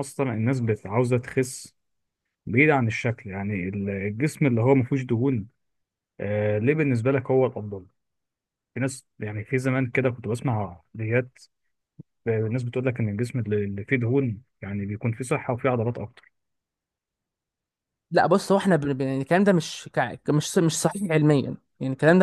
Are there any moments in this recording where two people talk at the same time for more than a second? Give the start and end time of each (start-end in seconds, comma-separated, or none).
none